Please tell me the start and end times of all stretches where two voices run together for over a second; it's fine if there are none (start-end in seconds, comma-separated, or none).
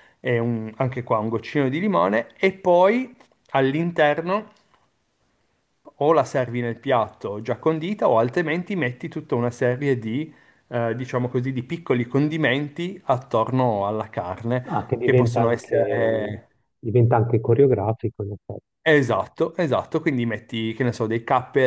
14.7-16.4